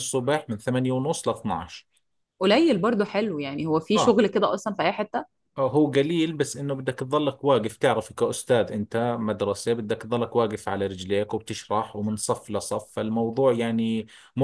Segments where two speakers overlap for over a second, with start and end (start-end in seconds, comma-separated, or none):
none